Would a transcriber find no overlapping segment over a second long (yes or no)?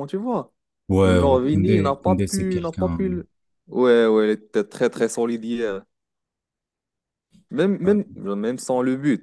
no